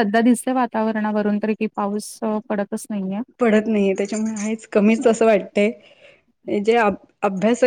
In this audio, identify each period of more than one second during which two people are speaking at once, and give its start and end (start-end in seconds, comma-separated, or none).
none